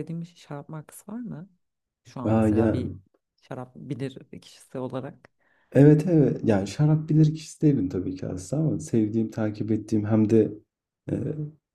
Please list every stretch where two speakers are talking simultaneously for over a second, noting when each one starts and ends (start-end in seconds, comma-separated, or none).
none